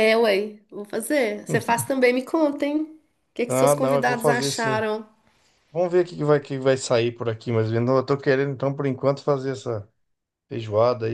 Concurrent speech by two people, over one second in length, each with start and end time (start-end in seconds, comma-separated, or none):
3.5-4.9